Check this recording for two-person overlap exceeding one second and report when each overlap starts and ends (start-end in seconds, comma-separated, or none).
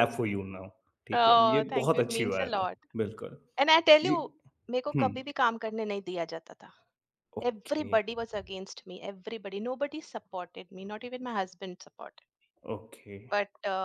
1.1-2.8